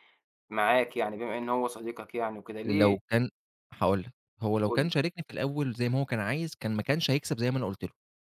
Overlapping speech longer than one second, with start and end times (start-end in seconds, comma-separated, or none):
none